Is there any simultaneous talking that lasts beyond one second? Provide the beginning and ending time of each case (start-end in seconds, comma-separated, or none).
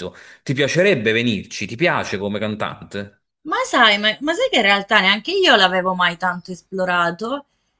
none